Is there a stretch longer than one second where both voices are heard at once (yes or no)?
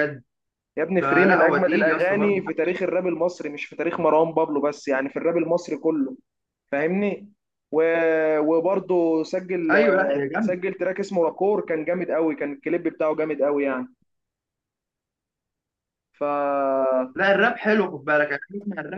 yes